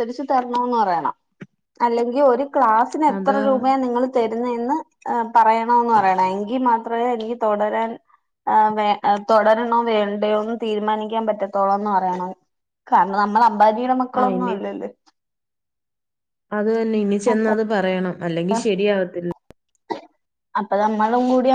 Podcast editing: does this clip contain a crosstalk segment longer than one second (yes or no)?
no